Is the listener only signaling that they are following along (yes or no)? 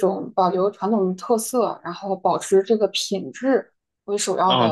no